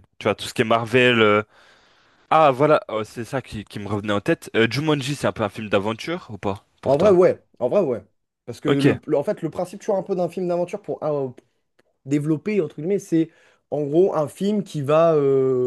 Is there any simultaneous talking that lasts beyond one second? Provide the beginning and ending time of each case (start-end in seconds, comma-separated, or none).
none